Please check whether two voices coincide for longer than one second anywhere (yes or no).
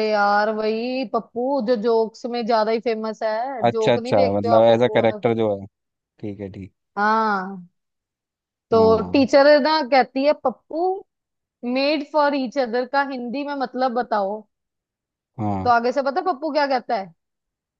yes